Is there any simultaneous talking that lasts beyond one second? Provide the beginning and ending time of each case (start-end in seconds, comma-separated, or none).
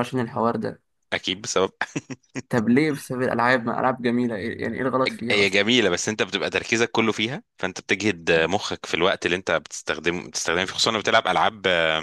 none